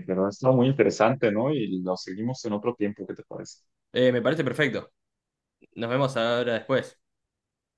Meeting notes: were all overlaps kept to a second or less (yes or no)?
yes